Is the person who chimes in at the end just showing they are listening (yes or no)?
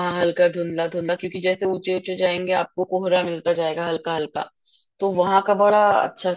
yes